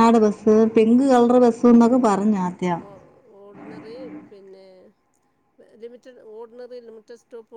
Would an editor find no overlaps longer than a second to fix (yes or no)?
yes